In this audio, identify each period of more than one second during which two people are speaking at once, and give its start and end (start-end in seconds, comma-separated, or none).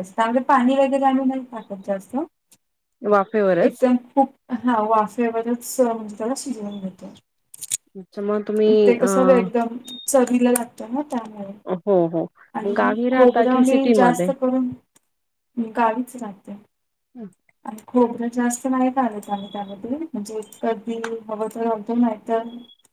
12.6-14.3